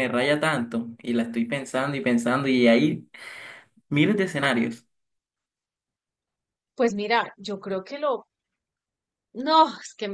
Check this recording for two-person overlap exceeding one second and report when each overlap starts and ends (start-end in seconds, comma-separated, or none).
none